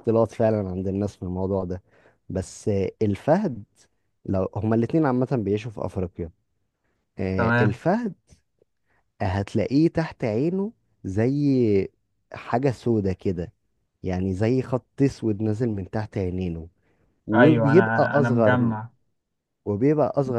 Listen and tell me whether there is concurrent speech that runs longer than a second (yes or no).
yes